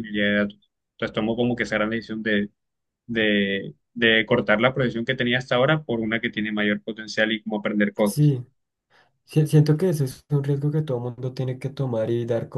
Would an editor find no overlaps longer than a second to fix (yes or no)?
yes